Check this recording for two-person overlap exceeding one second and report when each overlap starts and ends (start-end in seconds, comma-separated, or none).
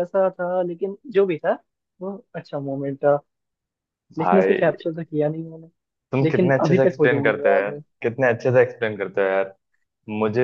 6.2-7.8